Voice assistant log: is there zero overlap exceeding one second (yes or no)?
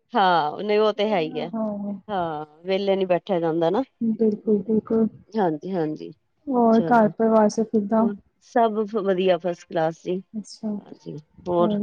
no